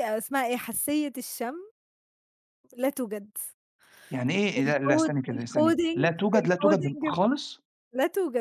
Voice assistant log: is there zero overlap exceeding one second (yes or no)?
no